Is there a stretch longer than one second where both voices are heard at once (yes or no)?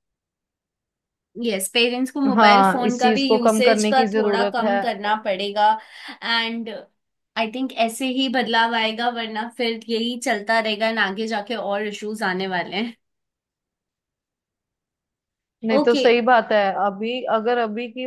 yes